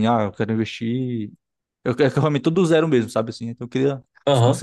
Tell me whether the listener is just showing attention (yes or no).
no